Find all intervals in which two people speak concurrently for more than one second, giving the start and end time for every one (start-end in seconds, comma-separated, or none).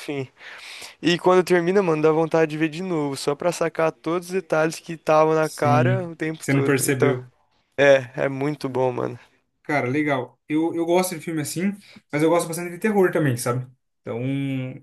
5.4-7.2